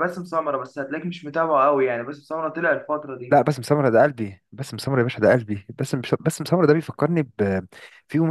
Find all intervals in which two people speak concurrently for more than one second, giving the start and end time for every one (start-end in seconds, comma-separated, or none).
none